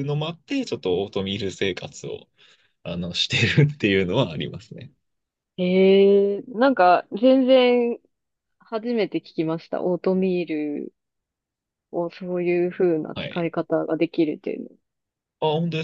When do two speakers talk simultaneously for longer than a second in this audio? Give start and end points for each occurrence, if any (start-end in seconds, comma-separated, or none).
none